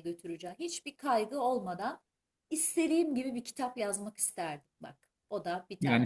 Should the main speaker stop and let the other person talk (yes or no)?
yes